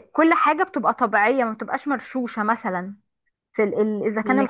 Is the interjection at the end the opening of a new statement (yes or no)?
no